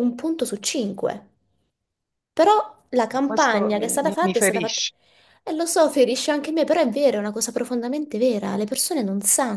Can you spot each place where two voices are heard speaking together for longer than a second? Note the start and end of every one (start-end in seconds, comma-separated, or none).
3.2-4.8